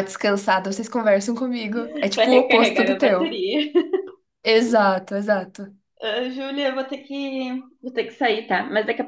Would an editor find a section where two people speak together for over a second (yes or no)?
yes